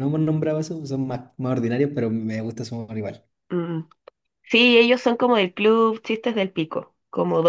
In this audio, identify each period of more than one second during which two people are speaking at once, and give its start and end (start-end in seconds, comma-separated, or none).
none